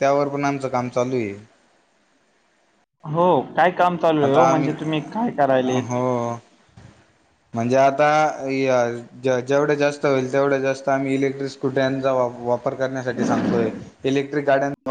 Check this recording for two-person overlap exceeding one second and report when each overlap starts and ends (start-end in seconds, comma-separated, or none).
none